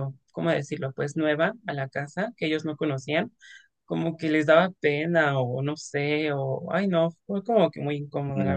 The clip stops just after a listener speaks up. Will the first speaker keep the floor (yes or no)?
no